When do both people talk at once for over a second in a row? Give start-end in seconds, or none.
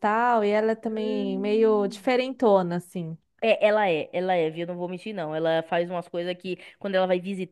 0.8-2.1